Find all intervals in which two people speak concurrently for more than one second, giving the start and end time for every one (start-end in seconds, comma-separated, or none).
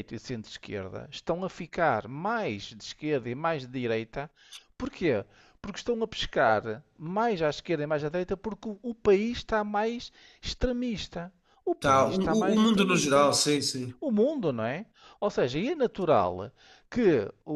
11.8-13.3